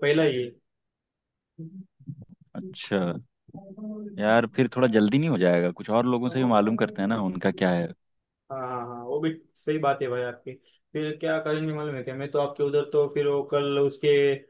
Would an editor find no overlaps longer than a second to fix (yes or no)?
yes